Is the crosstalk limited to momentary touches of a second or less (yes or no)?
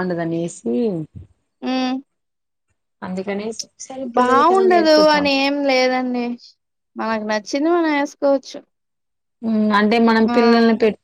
yes